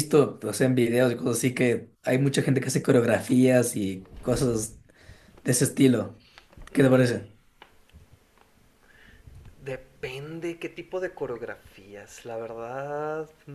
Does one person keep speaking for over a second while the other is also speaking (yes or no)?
no